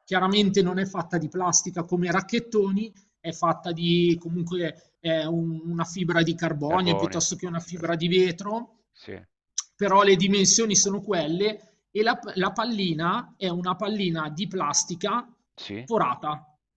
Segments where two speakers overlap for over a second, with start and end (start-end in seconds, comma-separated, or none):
6.7-8.0